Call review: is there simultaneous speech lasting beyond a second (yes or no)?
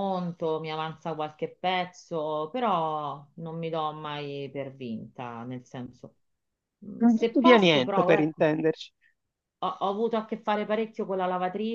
yes